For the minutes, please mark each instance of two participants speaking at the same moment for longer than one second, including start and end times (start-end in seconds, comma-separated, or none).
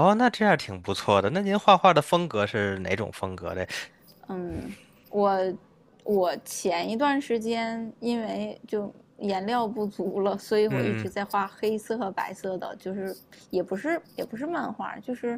none